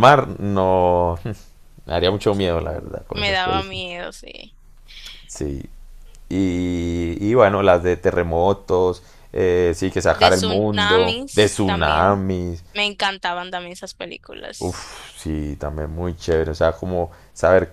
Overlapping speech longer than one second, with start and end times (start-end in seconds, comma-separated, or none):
2.6-3.8, 10.1-12.2